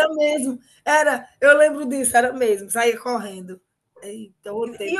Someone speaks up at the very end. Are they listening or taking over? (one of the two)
taking over